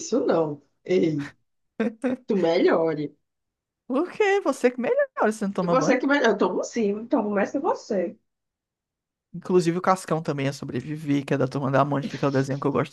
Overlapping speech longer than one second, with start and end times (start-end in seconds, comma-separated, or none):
none